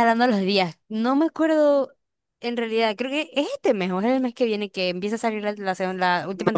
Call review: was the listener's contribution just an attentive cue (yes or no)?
no